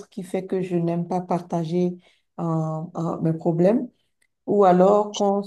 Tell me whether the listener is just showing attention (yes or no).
yes